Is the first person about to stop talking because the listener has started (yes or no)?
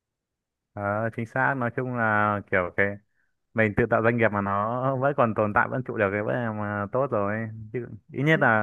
no